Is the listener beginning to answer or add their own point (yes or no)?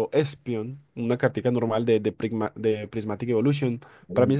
no